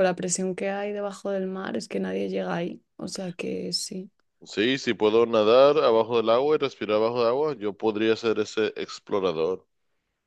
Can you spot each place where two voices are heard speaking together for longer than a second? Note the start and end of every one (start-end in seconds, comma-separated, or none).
none